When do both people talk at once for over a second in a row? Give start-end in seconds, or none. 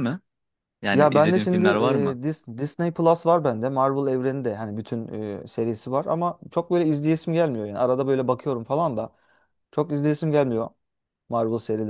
0.9-2.2